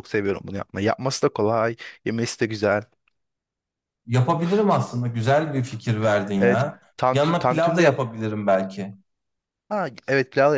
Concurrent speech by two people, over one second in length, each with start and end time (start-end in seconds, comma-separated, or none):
6.4-8.0